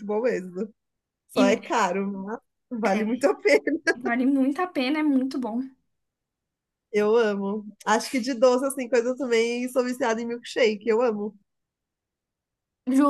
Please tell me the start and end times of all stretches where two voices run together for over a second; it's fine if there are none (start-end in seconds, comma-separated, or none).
none